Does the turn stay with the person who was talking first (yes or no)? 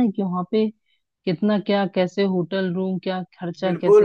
no